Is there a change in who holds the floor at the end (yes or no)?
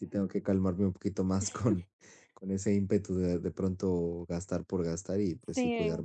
no